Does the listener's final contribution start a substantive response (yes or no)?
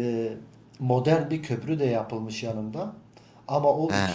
no